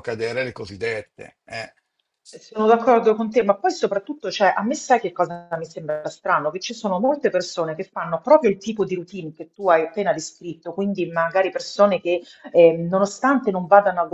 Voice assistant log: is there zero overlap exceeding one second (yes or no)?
yes